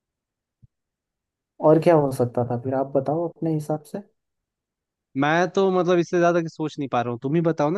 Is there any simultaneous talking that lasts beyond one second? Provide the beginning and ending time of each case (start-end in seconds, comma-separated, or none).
none